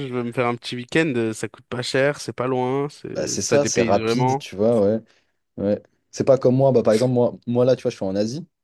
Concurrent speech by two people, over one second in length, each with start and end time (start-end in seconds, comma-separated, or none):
3.1-4.5